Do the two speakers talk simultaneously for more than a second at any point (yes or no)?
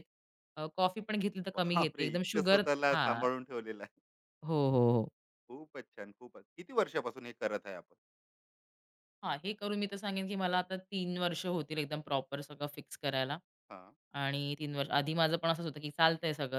yes